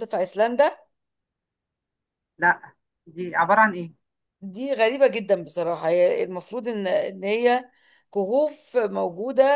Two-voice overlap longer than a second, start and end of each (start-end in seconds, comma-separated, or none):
none